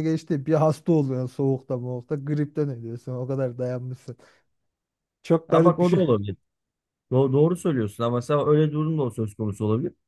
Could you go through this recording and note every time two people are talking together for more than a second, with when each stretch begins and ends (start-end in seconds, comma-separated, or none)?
none